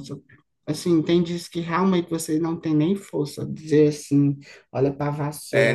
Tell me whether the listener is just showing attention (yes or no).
no